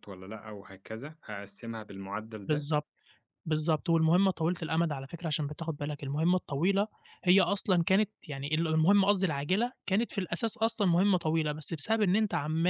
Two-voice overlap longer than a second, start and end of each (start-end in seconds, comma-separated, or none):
none